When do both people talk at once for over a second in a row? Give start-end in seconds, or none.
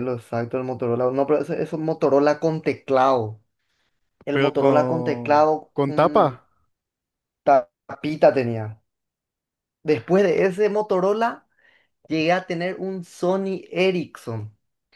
4.3-6.4